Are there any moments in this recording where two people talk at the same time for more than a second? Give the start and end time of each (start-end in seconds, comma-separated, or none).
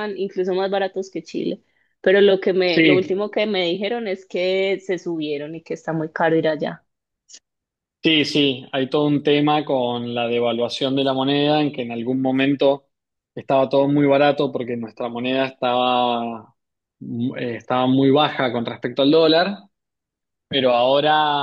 none